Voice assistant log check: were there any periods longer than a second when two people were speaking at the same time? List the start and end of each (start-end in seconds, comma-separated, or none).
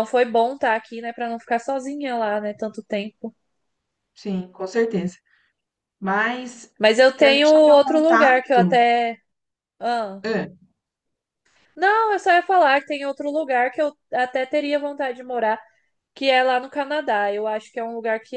7.2-8.8